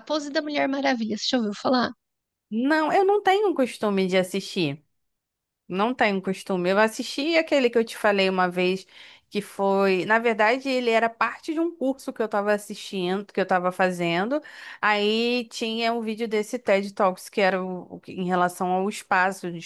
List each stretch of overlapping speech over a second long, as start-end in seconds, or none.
none